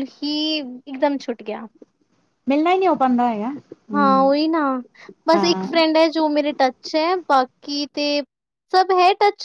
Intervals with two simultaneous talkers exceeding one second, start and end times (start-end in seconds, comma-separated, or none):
none